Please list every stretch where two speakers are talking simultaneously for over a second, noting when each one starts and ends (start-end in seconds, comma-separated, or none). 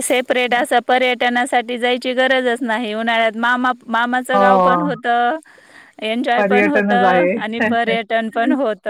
6.4-8.0